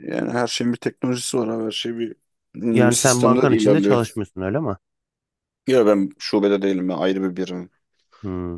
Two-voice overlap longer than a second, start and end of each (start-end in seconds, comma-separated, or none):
2.7-4.0